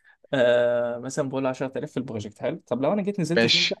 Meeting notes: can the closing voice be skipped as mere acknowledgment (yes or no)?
yes